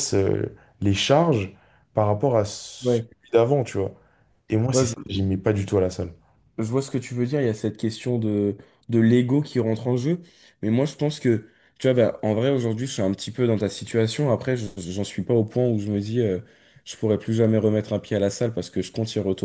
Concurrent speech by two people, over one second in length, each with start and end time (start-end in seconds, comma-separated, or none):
none